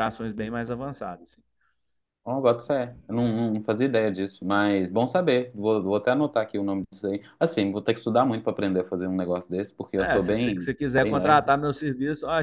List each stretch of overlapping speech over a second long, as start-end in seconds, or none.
10.0-11.5